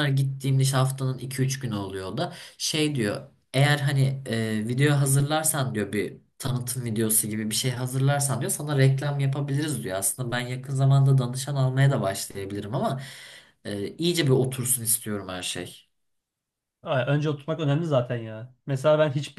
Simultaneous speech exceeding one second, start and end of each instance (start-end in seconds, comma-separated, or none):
none